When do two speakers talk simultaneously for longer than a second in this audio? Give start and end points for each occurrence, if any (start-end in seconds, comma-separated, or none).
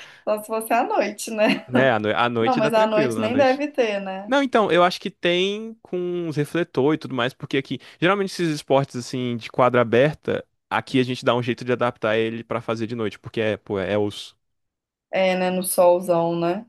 2.4-3.6